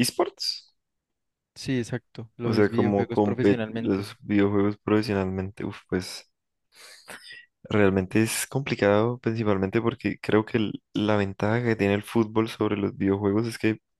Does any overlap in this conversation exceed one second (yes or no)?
yes